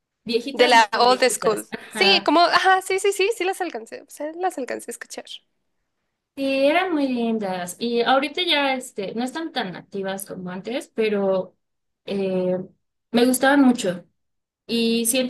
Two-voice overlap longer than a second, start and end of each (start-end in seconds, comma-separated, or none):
0.5-2.3